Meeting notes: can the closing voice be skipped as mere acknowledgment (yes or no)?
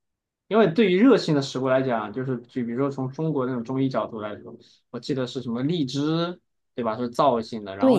no